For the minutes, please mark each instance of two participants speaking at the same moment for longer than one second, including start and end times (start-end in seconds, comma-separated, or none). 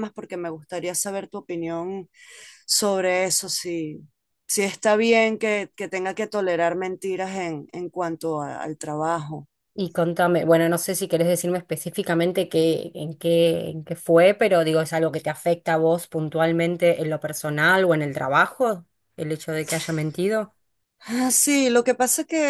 none